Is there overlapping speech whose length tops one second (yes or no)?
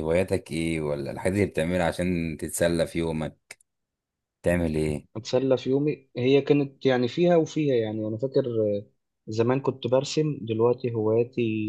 no